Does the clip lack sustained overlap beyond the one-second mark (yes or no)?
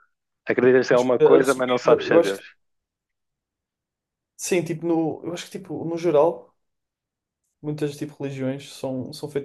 no